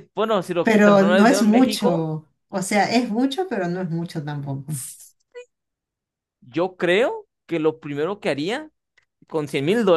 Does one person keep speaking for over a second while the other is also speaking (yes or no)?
yes